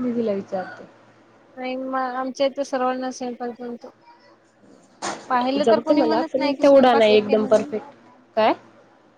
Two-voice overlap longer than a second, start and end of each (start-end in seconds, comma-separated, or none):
5.6-7.7